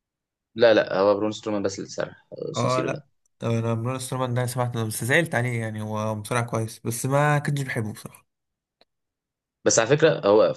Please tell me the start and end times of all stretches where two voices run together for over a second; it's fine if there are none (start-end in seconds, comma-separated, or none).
none